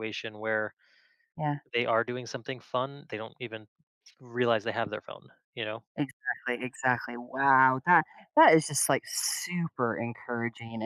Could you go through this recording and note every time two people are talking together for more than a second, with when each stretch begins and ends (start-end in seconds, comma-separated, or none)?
none